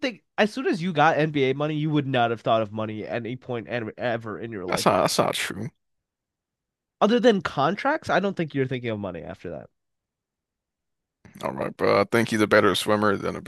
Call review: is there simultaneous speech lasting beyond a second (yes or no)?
no